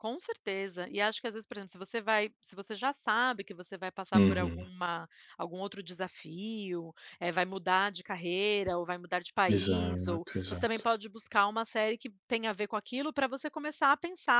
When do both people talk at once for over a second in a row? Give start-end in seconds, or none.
9.6-10.9